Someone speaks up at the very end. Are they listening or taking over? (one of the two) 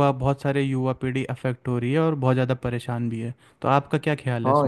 taking over